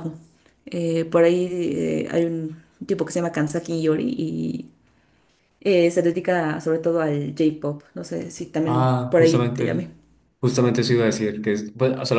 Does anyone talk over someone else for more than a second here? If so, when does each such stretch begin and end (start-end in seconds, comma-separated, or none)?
8.7-9.9